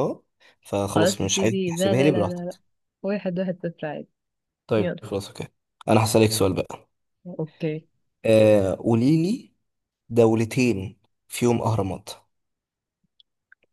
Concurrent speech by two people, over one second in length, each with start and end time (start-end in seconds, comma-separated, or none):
0.9-2.6